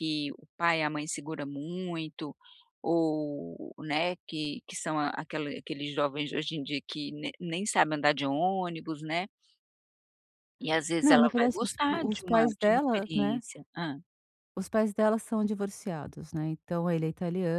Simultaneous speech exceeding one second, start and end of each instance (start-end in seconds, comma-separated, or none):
11.0-13.4